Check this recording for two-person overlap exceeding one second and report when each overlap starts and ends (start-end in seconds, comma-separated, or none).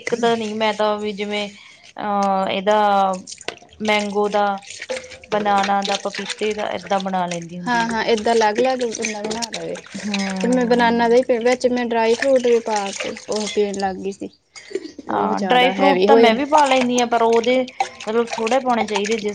15.1-16.4